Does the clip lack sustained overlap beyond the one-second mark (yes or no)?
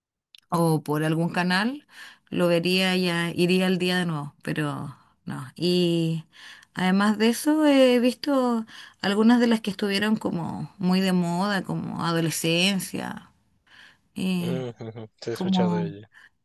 yes